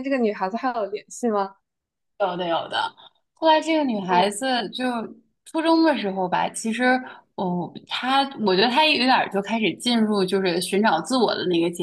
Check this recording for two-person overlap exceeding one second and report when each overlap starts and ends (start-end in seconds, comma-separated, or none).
none